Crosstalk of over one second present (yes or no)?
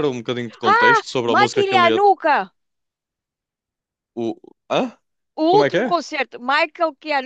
yes